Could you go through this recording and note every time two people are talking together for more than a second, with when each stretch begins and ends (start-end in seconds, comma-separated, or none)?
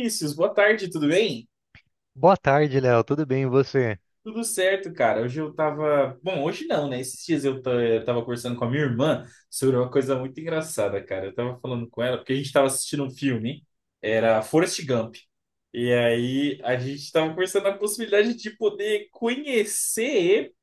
none